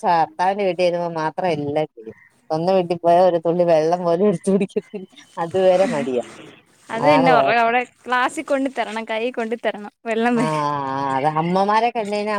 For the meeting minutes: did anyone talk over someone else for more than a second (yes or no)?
no